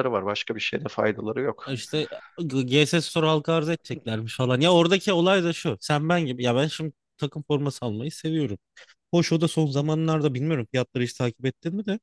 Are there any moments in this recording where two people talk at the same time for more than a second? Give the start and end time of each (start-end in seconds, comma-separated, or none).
none